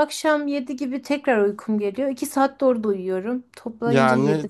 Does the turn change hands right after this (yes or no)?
yes